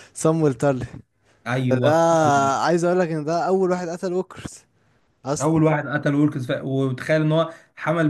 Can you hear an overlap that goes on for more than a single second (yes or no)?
no